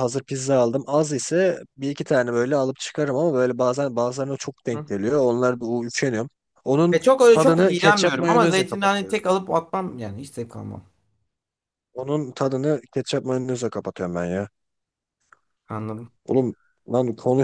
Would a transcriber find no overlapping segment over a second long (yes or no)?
no